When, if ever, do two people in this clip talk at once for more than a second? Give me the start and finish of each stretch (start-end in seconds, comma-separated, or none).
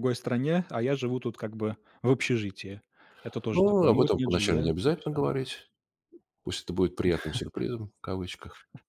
3.5-5.2